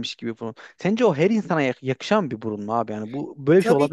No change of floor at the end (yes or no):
no